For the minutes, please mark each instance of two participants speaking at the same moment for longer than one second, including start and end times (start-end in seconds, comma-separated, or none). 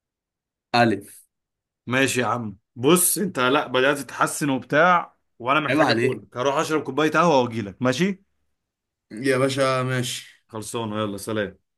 none